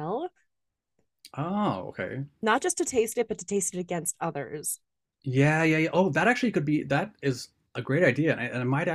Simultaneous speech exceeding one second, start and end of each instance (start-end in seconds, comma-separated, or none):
none